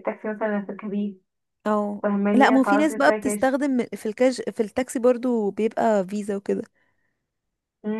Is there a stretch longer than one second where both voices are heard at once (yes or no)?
yes